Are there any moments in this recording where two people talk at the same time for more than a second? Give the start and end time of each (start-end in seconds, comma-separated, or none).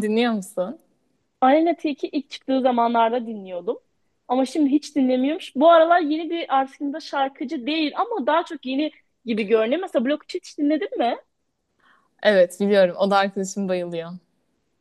none